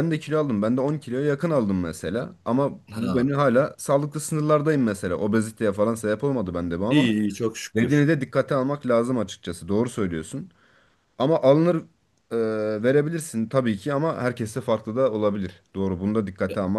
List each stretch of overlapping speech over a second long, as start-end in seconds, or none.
none